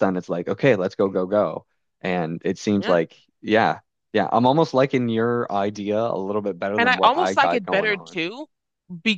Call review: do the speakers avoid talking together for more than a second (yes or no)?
no